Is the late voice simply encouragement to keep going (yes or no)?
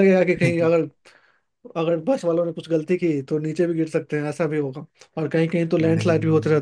yes